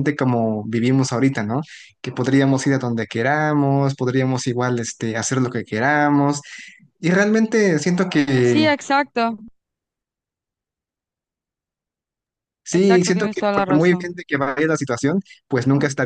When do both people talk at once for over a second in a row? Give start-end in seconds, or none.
12.7-14.1